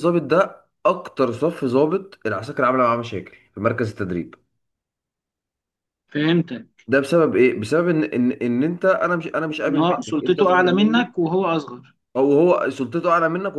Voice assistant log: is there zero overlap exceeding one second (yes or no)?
no